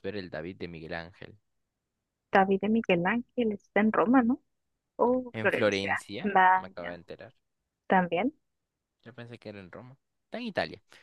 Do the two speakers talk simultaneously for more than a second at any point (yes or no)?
yes